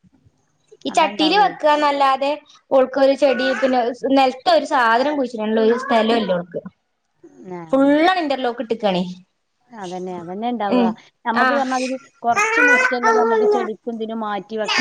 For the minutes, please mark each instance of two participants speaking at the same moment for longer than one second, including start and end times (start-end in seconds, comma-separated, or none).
none